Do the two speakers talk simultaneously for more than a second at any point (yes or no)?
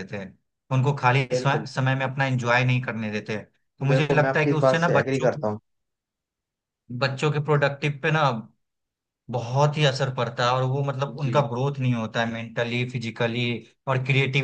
yes